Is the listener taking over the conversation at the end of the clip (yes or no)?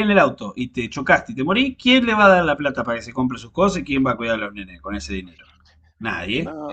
no